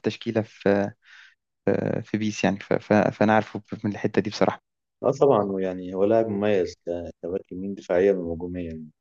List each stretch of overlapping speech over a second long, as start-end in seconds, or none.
none